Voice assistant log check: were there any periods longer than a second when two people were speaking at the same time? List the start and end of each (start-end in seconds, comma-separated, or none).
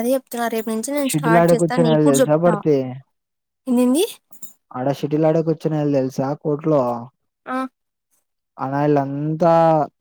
1.1-2.5